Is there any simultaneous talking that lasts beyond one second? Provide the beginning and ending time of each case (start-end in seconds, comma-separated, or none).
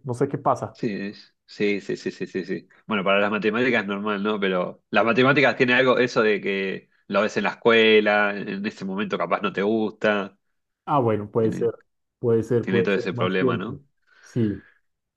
12.6-13.8